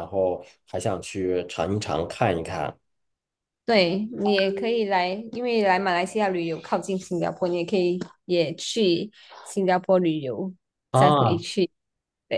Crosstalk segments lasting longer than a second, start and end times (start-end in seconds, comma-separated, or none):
none